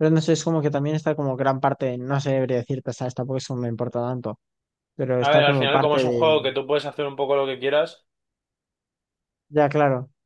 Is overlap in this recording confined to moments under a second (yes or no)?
no